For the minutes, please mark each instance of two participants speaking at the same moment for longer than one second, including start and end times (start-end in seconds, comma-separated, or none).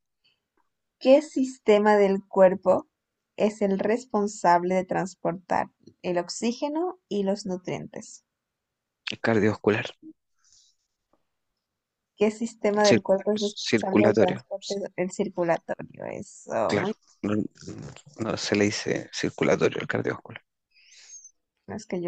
12.8-14.4